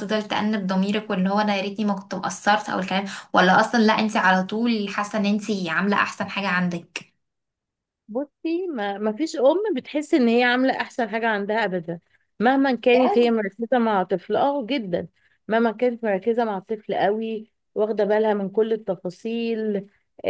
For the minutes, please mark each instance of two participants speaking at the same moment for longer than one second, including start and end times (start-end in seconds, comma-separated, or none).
none